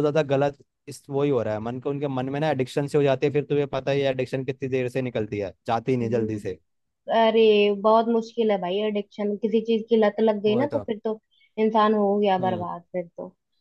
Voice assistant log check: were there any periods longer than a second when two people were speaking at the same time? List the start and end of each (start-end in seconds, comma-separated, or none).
none